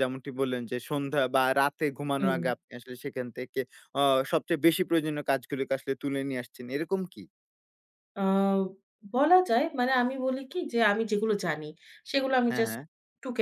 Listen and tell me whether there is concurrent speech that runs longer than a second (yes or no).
no